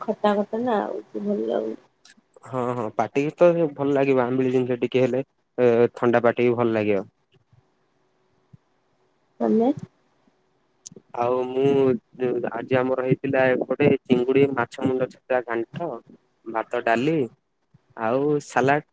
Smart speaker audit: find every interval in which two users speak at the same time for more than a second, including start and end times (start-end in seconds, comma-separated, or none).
none